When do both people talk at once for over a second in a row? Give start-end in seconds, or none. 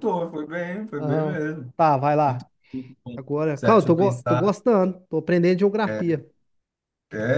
3.1-4.6